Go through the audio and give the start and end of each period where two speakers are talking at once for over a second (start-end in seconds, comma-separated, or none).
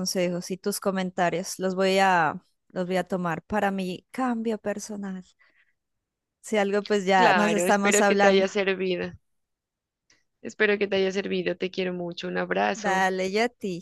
7.2-8.5